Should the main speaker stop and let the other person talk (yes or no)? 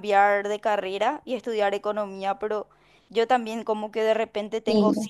no